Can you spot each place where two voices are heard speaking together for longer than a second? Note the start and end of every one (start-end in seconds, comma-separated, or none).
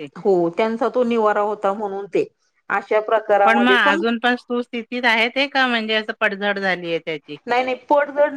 none